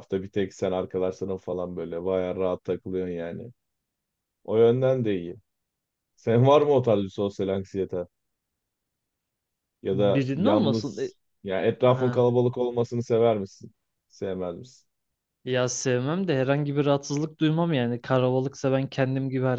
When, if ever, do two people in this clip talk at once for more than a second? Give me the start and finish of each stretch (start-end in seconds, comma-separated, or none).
9.9-11.1